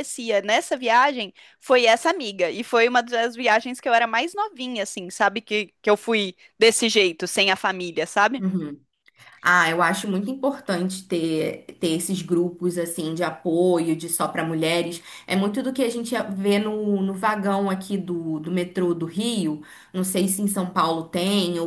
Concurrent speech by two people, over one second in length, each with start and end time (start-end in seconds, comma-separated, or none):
none